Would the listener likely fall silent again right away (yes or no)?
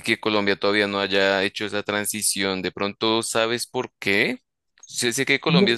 yes